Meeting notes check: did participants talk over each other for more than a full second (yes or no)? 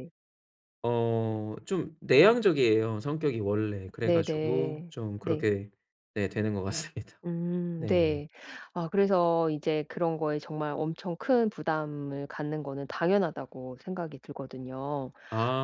yes